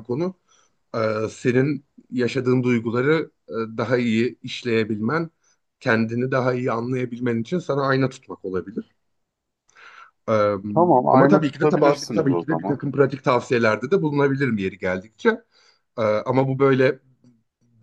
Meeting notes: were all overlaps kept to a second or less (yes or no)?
no